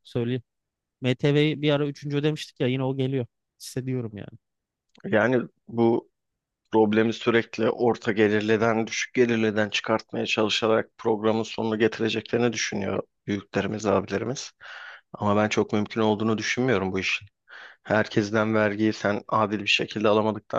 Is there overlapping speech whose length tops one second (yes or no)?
no